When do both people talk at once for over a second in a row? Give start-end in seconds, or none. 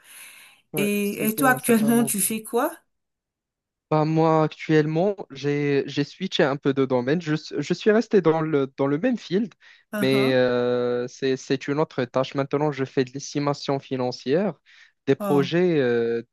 0.8-2.1